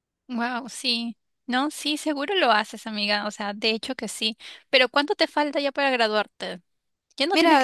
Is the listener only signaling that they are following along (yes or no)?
no